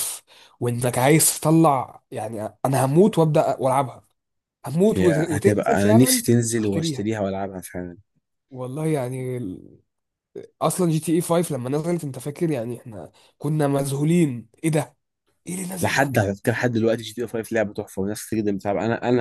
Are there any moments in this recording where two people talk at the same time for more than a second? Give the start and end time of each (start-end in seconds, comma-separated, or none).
4.9-7.1